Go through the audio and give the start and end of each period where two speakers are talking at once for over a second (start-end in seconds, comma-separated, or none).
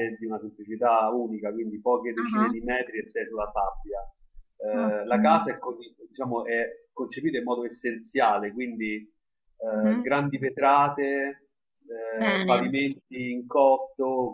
none